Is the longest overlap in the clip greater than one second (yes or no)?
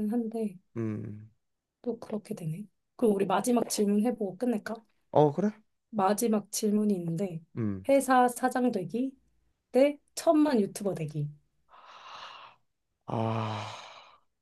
no